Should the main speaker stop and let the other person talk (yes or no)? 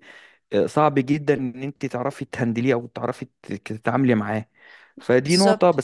no